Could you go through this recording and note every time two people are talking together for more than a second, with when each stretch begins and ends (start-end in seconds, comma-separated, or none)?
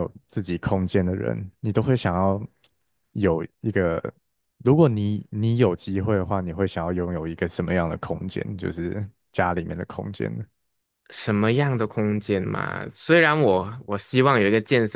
none